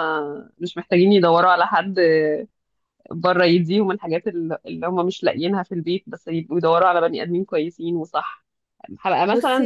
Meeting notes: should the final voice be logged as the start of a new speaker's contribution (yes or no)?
no